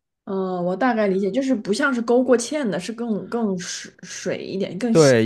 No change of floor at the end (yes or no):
no